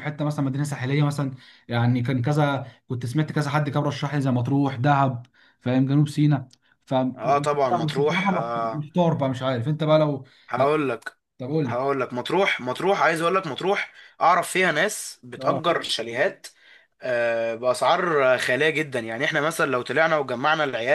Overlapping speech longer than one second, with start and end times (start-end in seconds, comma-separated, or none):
7.2-8.9